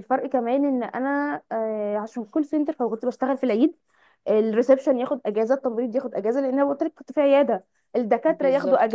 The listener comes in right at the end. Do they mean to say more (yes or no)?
no